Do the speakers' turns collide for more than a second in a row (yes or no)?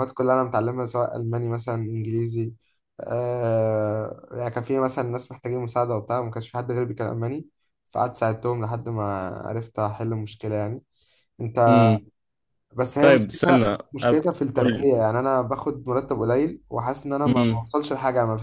yes